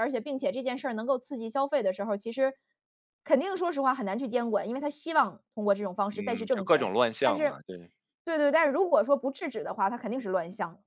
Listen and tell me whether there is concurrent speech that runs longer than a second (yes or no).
yes